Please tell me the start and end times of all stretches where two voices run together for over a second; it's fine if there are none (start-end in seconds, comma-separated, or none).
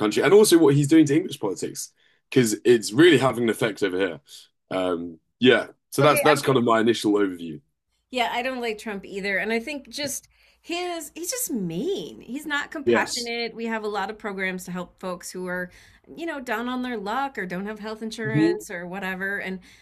none